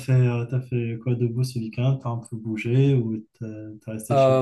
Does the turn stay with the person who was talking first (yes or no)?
no